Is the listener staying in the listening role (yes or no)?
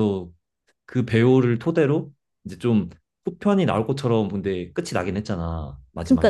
no